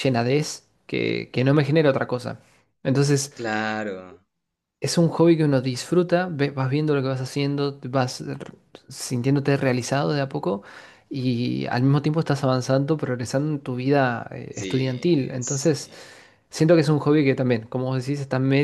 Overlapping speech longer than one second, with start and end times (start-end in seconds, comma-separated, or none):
14.5-15.8